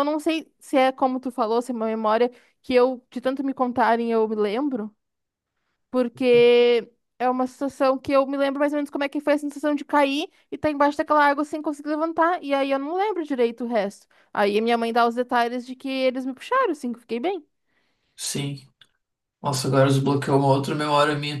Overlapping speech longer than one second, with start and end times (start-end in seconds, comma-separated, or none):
none